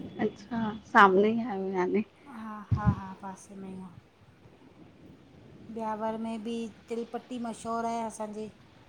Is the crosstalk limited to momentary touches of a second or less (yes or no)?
yes